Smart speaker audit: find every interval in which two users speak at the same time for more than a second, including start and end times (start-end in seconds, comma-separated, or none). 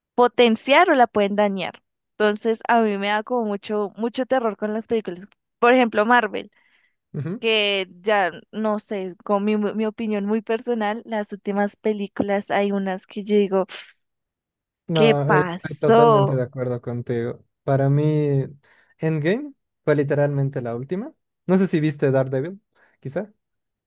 14.9-16.4